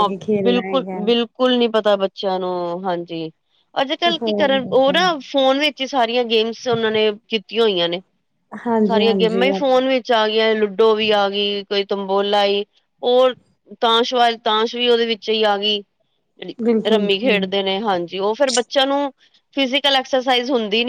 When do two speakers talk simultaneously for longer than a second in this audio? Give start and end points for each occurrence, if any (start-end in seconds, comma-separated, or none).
none